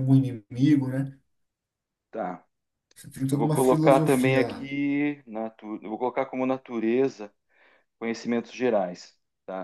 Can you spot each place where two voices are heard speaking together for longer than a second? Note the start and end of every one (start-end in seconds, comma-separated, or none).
3.3-4.7